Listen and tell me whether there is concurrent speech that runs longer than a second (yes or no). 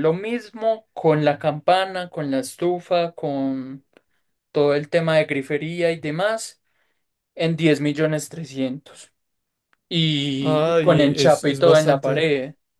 yes